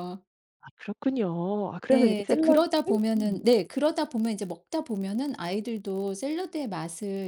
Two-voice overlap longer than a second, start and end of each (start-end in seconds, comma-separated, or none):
1.9-3.4